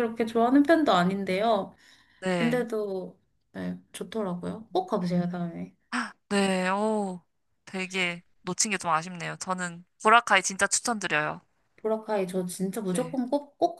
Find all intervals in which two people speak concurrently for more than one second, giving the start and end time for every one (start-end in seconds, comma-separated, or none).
none